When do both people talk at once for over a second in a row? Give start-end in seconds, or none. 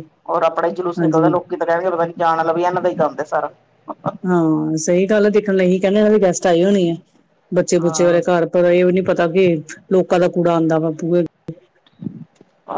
none